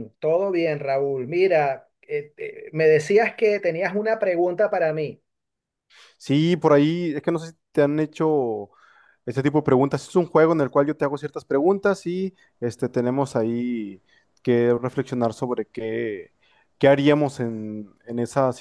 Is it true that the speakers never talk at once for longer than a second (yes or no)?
yes